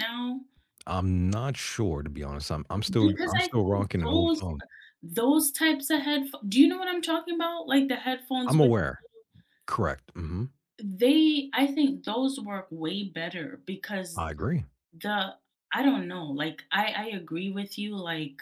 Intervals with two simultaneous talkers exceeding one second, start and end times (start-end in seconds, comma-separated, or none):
3.0-4.4